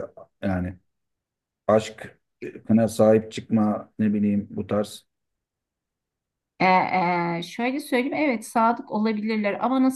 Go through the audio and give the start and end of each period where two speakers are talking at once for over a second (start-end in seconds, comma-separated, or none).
none